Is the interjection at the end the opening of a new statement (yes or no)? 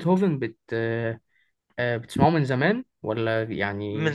yes